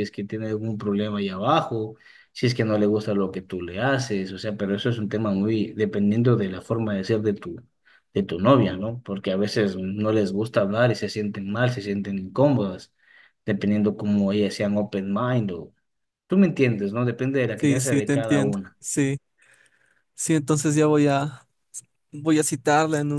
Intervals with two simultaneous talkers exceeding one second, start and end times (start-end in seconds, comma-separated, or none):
17.6-18.8